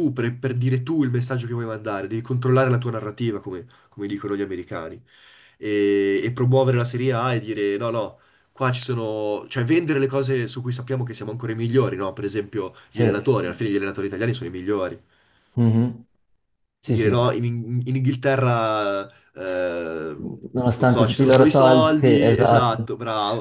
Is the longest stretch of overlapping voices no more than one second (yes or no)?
no